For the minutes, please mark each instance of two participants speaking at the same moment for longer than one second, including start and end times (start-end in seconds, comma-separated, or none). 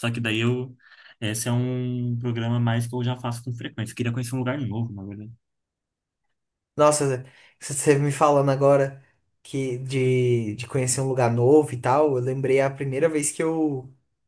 none